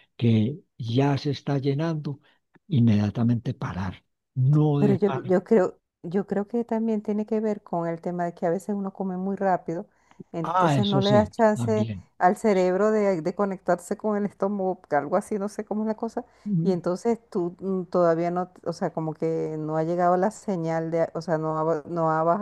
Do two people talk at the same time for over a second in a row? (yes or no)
yes